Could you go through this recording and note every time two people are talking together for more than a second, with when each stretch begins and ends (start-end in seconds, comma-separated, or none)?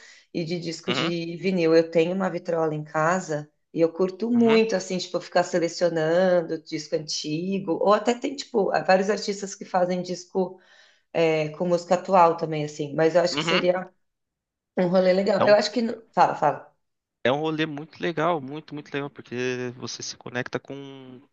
none